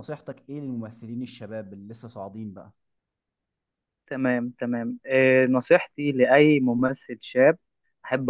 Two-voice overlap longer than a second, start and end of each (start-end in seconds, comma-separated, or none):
none